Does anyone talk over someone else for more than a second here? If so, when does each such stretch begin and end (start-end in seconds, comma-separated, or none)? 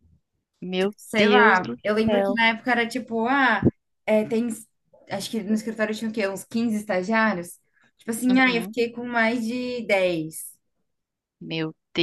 0.8-2.4